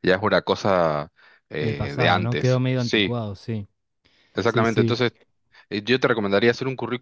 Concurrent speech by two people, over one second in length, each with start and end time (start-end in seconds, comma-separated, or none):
1.6-3.2